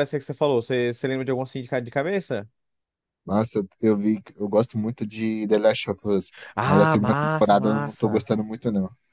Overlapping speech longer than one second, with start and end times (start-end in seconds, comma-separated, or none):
6.5-8.3